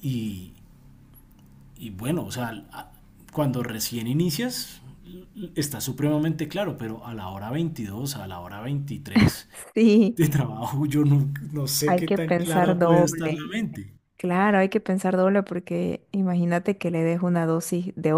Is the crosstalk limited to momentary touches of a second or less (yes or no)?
no